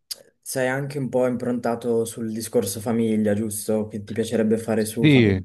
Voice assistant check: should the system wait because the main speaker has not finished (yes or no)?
no